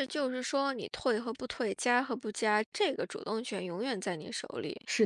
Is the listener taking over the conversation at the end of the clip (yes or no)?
no